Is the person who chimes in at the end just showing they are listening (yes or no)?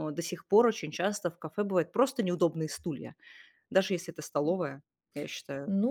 no